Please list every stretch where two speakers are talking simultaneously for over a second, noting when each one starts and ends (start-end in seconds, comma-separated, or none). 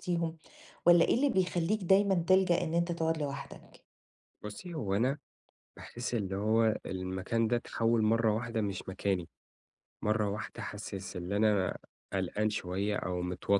none